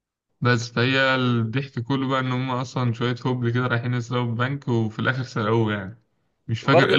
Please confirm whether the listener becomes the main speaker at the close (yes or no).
yes